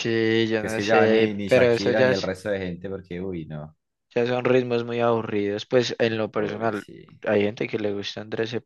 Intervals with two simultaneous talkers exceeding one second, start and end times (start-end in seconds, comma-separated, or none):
0.5-2.3